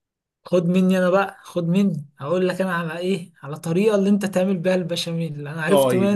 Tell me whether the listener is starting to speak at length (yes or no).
yes